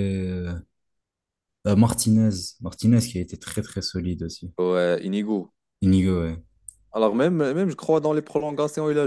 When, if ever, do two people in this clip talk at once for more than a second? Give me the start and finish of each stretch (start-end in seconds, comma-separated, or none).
none